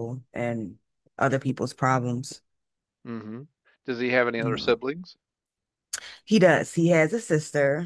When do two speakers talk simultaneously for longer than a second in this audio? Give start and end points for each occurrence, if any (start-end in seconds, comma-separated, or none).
none